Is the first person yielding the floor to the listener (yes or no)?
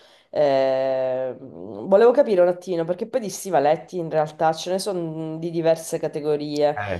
no